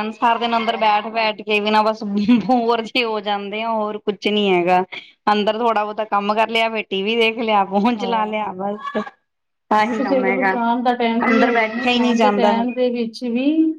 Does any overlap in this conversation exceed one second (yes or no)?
yes